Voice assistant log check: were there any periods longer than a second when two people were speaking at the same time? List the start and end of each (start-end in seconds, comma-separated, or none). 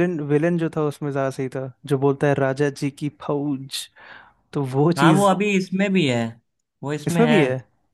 none